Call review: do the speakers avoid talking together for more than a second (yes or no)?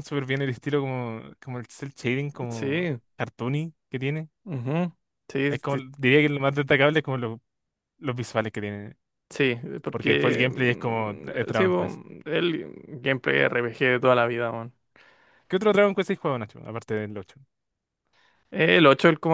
no